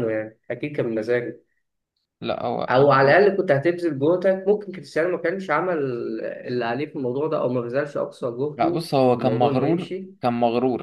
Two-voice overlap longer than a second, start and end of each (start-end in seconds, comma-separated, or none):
8.6-10.1